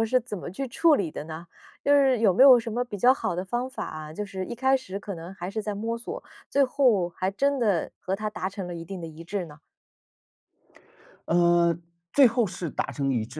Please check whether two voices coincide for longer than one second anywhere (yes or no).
no